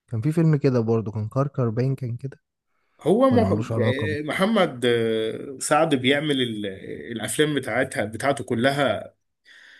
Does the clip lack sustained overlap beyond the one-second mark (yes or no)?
yes